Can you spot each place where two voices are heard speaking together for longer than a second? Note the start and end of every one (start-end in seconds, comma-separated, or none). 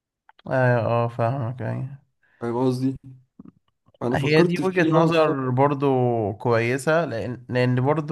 4.1-5.5